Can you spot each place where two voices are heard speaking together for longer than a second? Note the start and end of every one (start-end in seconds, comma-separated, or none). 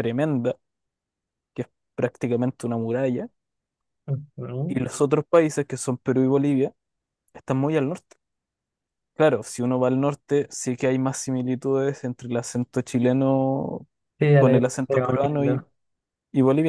14.4-15.6